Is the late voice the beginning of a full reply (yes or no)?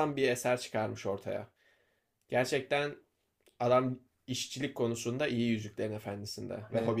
no